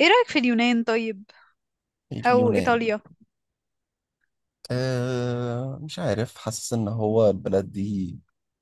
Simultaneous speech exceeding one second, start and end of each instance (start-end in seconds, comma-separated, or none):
none